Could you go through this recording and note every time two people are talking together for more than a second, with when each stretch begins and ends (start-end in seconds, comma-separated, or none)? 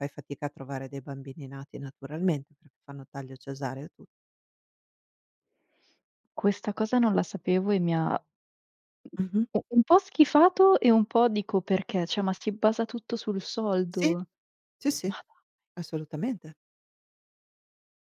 none